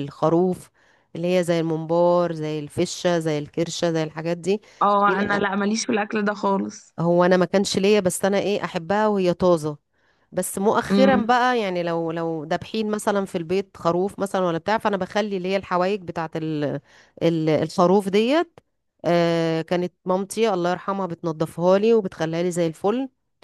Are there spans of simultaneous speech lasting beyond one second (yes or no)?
no